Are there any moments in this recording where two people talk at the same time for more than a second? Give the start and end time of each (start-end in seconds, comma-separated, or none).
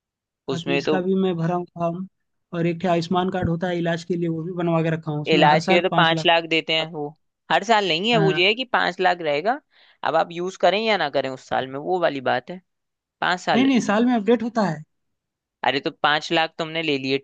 5.3-7.0